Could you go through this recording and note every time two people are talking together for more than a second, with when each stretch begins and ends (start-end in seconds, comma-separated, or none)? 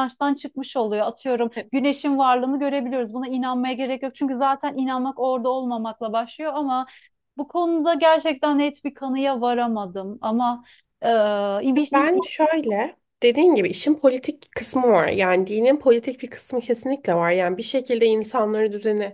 none